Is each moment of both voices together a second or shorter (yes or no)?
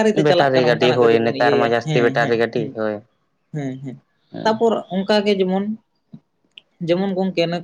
no